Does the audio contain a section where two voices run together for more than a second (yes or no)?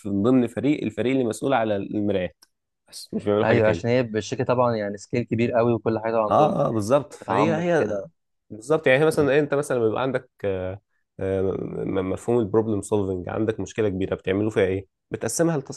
yes